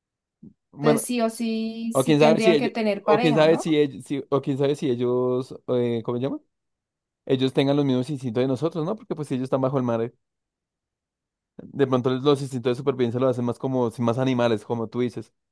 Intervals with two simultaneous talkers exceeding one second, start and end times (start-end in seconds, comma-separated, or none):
1.9-3.8